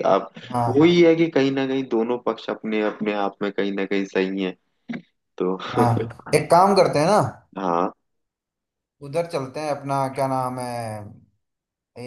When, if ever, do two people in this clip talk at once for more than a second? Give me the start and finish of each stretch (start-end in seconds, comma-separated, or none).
none